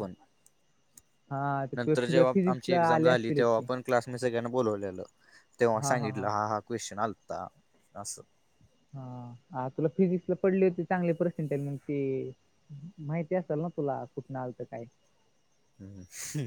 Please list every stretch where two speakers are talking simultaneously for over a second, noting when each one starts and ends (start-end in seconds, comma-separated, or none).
1.8-3.6